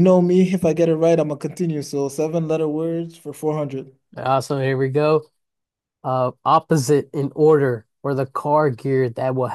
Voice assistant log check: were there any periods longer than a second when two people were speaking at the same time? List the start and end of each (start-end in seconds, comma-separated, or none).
none